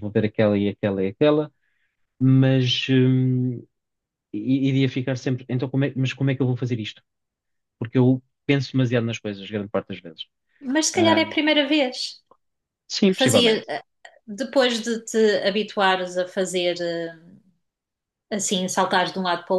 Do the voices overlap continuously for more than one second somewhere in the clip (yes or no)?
no